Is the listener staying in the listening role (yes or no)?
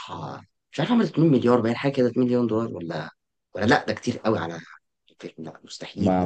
no